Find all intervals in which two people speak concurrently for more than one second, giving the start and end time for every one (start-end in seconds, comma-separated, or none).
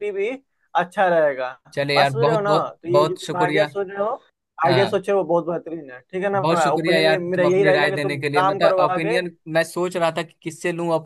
1.9-3.7, 6.4-9.2